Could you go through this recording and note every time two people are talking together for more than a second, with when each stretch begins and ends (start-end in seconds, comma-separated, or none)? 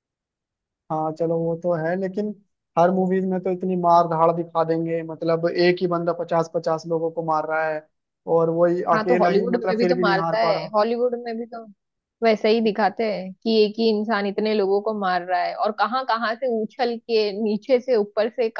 8.9-10.7